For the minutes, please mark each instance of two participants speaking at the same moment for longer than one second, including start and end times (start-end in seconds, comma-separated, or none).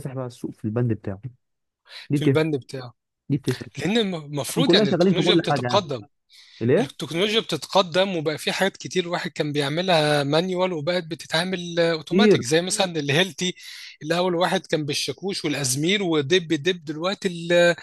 4.5-5.9